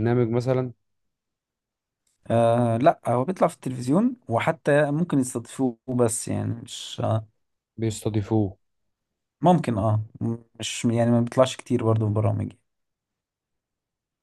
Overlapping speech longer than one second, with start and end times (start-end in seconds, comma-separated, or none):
none